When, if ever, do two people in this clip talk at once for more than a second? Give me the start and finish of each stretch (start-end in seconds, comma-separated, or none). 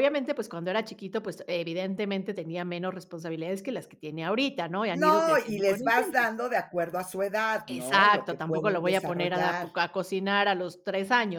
4.9-6.3, 7.7-9.7